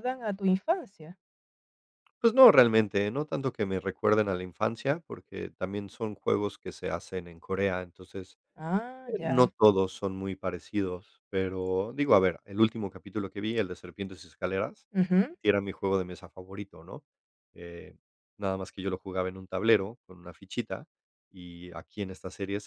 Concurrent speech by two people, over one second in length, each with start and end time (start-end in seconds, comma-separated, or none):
none